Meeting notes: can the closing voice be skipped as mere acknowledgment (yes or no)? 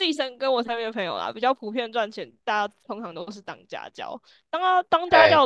yes